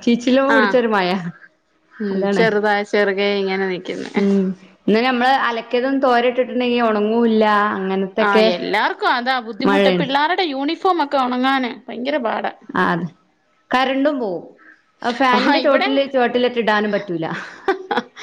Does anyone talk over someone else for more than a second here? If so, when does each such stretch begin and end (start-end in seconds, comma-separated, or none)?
none